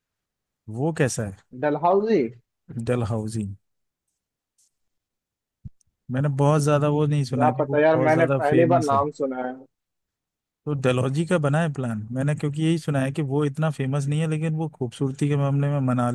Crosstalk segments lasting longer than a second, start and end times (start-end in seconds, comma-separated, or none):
7.3-9.0